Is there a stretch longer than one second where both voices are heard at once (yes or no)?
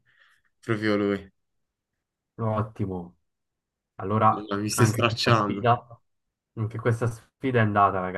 yes